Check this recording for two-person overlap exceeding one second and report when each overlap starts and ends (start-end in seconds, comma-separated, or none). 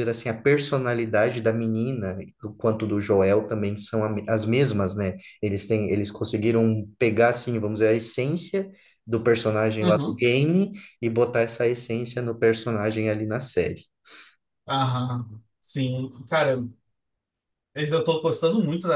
none